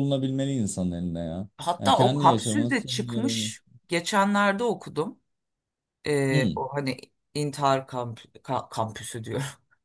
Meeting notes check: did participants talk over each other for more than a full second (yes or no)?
yes